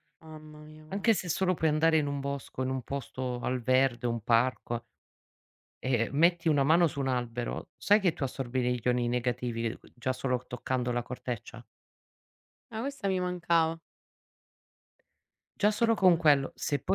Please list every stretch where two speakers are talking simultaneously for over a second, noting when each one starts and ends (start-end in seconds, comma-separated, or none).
none